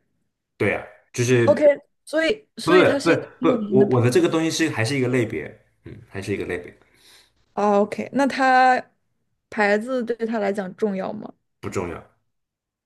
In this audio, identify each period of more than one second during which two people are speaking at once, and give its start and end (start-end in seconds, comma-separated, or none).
2.6-4.2